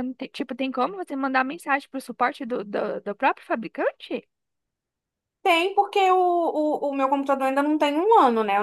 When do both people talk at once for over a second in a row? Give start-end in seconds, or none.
none